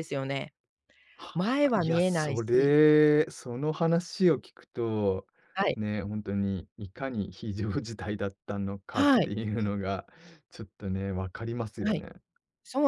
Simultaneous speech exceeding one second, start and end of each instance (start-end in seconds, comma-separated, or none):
1.3-2.7